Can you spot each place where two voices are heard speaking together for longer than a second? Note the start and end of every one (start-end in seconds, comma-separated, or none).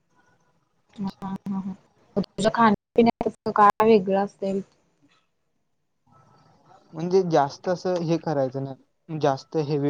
none